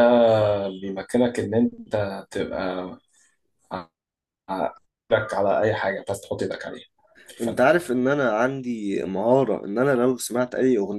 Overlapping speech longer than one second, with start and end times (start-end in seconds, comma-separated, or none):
none